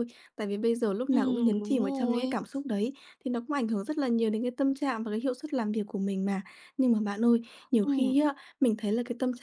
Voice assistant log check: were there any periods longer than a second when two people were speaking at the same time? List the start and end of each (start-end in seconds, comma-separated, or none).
1.1-2.4